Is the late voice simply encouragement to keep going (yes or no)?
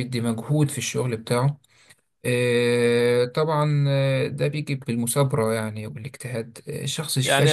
no